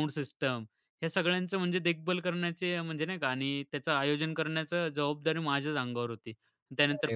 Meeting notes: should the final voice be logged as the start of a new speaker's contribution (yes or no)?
no